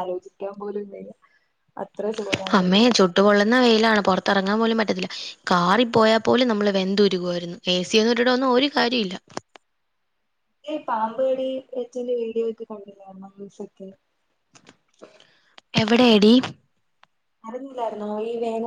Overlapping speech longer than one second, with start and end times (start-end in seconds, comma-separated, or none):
none